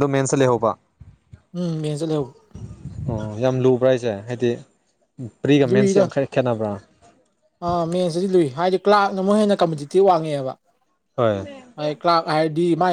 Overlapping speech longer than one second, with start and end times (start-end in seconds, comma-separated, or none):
none